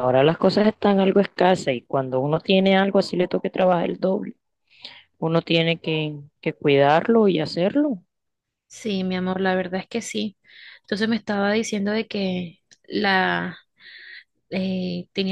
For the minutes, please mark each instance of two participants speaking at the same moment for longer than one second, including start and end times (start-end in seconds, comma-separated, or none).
none